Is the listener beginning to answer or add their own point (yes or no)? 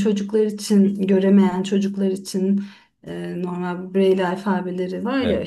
no